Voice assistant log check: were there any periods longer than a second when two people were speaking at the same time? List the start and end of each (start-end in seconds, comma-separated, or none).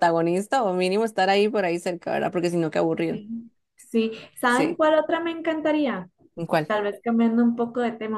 none